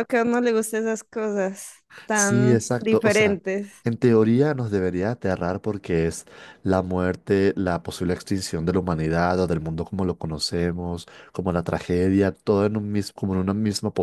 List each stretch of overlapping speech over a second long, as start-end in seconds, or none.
2.1-3.4